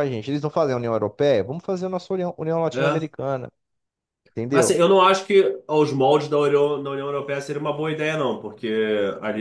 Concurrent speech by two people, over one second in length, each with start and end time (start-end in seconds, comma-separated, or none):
none